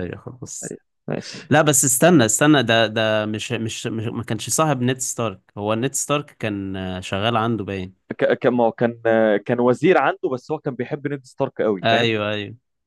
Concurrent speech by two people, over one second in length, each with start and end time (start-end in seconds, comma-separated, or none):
none